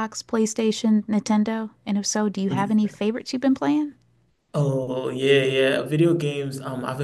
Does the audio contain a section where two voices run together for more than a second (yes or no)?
no